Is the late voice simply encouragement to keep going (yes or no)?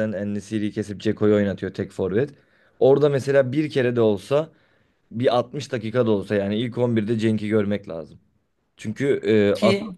yes